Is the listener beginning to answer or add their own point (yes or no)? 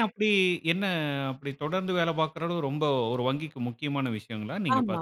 yes